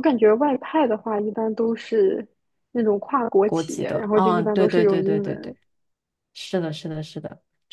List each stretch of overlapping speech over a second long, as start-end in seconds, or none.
3.4-5.6